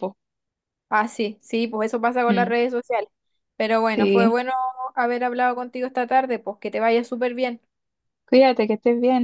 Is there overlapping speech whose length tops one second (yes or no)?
no